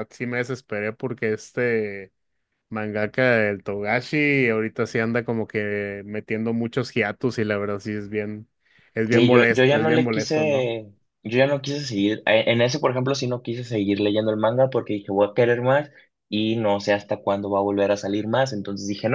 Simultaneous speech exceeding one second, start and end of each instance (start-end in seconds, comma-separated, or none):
9.1-10.7